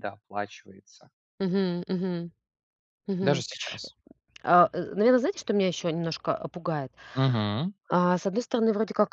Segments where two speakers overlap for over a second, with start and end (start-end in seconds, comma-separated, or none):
none